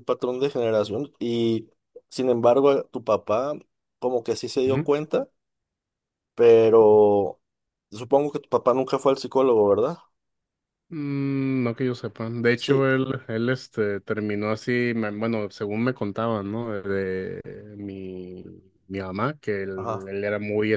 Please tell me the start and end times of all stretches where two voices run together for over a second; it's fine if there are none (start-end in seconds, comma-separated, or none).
none